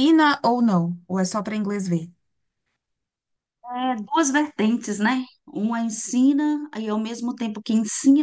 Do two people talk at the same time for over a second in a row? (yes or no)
no